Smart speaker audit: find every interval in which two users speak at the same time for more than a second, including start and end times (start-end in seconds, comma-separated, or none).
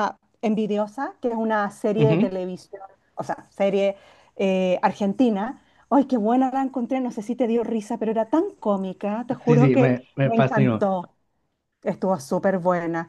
9.5-10.9